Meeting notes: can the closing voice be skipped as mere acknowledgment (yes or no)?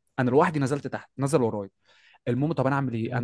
yes